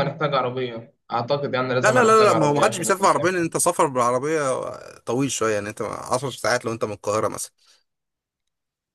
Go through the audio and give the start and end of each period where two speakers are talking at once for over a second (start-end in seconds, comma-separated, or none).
1.8-3.5